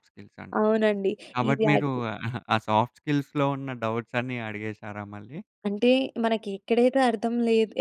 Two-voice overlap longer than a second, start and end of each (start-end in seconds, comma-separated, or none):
none